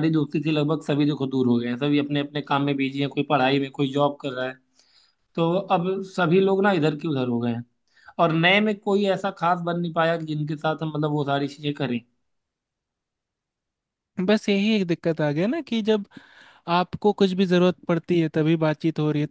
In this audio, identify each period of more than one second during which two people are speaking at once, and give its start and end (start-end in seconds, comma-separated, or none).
none